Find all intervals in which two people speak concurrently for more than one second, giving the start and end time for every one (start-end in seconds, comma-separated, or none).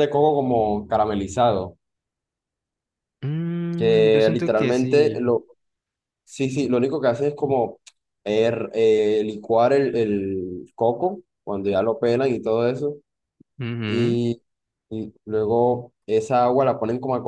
3.8-5.3